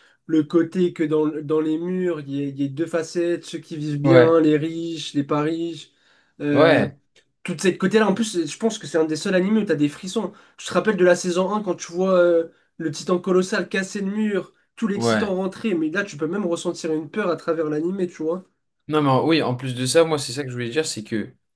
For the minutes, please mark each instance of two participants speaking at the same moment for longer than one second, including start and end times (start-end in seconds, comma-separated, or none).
none